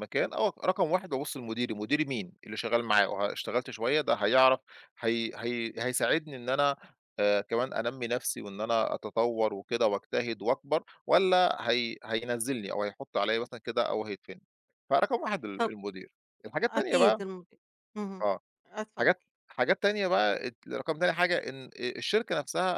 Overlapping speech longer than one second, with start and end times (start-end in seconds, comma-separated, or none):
none